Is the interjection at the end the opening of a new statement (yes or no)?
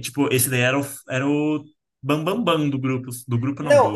yes